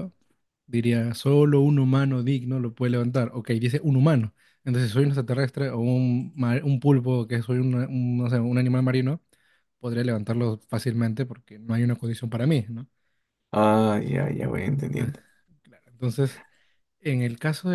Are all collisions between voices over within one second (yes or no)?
yes